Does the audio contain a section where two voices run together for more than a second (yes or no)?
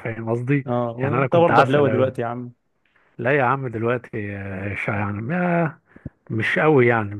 yes